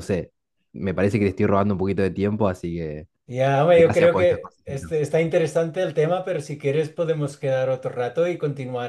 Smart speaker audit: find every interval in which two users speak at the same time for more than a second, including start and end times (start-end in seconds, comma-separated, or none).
3.7-5.0